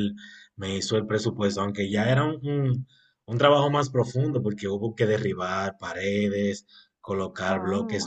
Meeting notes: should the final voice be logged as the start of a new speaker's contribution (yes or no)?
no